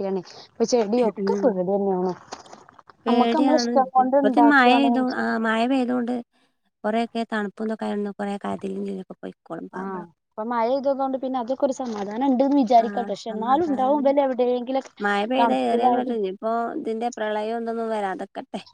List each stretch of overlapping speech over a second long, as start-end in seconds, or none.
12.8-14.2